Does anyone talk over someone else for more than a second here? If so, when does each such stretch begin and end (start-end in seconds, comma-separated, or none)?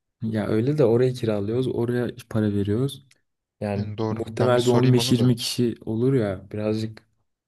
3.8-5.3